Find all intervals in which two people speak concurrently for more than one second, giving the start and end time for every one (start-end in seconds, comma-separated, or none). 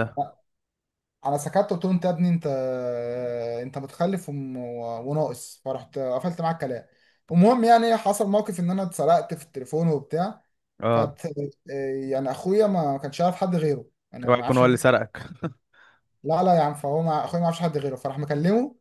none